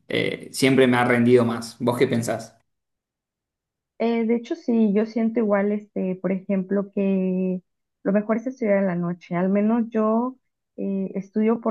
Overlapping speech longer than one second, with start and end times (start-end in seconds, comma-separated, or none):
none